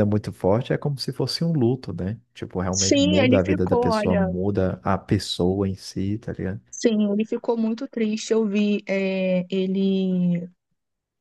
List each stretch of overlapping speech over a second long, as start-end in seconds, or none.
2.7-4.3